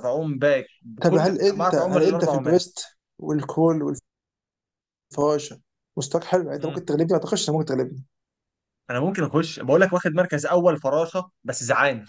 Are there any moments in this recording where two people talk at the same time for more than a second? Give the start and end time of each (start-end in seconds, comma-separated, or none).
1.0-2.4